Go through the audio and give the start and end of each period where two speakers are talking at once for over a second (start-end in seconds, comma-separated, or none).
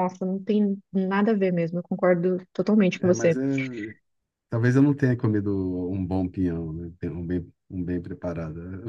none